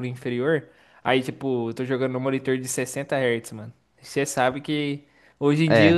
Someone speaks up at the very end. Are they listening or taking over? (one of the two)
listening